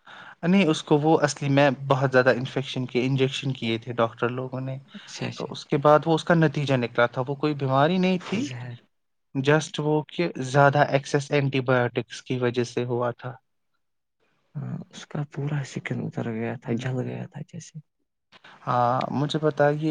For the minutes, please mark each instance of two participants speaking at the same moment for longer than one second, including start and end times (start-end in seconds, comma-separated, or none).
none